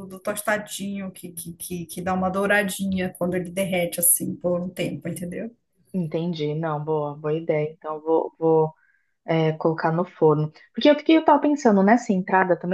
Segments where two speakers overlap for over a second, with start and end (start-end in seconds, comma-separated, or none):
none